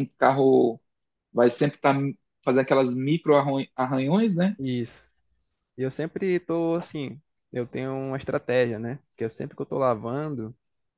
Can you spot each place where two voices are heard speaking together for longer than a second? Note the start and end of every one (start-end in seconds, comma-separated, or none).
none